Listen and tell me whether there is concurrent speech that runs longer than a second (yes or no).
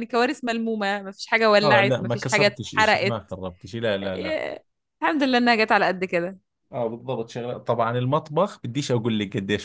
yes